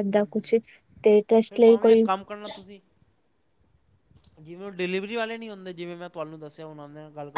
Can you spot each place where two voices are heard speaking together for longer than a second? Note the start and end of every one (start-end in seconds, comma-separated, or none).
none